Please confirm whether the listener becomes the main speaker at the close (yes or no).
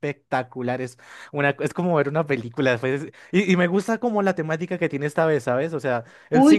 yes